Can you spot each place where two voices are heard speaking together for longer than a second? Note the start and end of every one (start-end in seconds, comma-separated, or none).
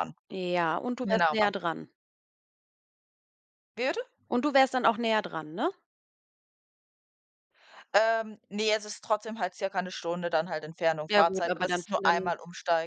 11.1-12.3